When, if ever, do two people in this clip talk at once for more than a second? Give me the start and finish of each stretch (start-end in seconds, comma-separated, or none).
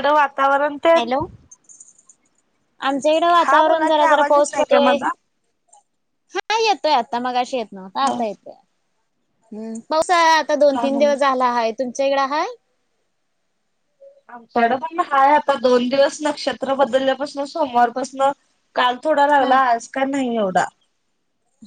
3.4-5.0